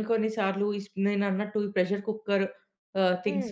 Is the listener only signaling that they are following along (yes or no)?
yes